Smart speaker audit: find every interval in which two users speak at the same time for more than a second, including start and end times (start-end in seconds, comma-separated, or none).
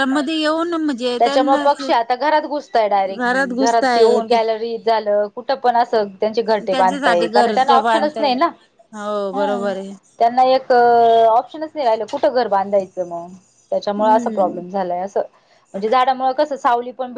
3.2-4.4, 6.7-8.3